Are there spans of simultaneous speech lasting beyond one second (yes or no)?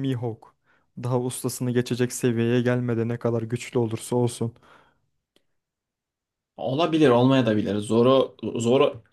no